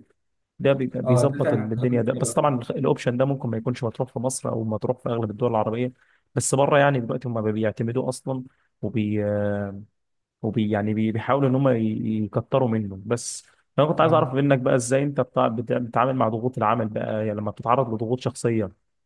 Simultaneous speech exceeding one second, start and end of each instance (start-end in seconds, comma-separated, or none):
1.0-2.5